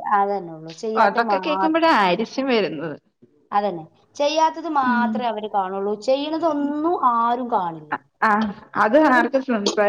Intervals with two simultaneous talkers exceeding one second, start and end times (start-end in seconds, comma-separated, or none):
none